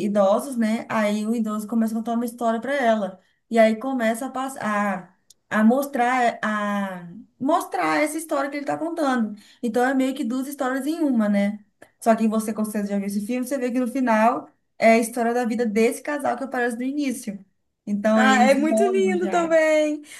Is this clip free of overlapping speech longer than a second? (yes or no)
no